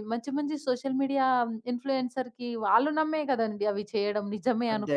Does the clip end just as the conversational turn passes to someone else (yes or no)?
no